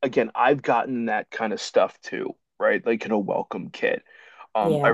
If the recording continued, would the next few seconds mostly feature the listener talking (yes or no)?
no